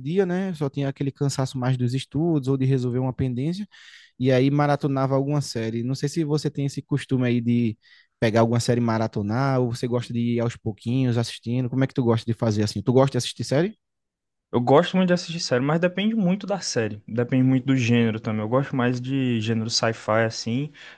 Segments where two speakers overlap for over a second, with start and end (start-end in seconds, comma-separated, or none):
none